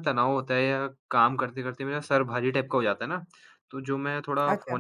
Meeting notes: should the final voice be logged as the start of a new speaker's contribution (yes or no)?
no